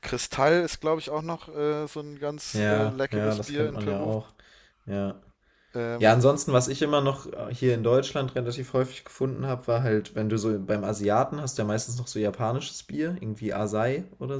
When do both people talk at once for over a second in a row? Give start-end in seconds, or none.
2.5-4.1